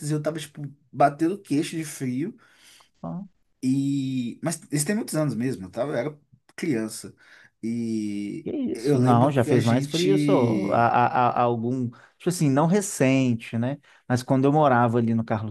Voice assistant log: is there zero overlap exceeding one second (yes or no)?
no